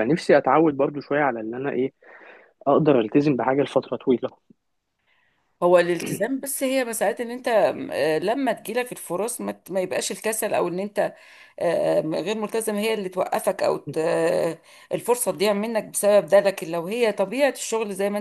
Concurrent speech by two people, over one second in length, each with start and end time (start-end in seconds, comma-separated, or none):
none